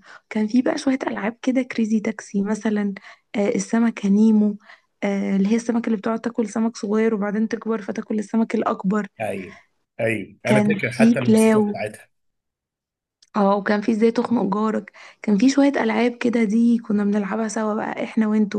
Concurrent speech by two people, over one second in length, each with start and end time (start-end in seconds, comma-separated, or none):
10.4-11.8